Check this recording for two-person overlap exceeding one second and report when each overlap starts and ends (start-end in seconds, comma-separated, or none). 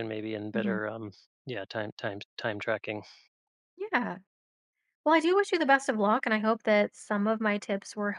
none